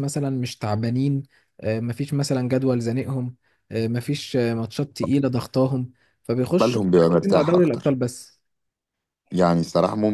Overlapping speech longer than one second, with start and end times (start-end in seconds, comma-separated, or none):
6.6-7.9